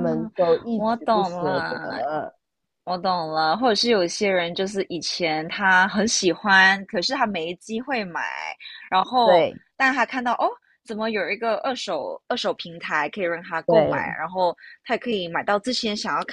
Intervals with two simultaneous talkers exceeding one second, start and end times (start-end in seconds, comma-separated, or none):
0.7-2.0